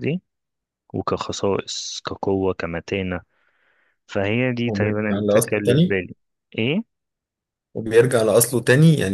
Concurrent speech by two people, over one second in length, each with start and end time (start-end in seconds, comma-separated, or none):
4.7-6.0